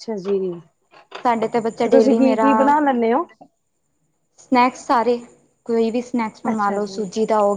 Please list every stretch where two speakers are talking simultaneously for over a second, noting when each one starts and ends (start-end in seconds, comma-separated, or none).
1.2-2.5